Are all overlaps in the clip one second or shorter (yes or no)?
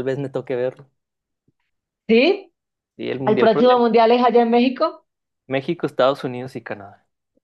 yes